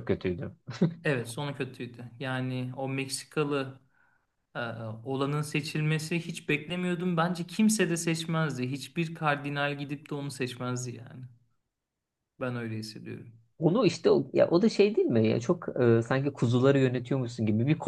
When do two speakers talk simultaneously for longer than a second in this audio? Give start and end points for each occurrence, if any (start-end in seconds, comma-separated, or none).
none